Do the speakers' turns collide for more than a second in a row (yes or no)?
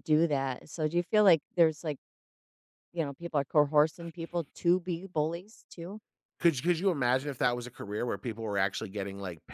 no